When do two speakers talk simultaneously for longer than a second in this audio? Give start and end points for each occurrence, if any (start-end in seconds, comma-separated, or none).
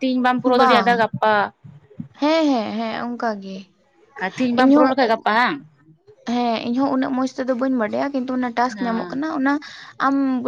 none